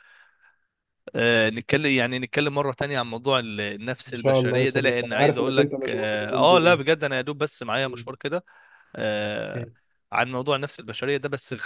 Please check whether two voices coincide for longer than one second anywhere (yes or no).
yes